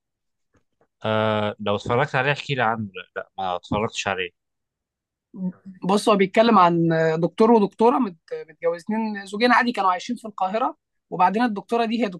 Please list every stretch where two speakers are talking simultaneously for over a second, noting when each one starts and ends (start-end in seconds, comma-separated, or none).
none